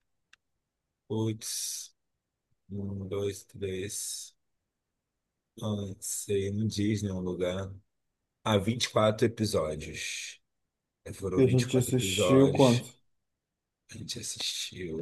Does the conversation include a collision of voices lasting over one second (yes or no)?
yes